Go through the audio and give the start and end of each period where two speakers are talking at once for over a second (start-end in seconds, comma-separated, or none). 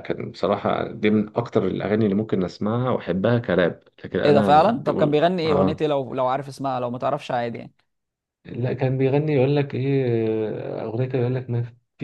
4.2-5.8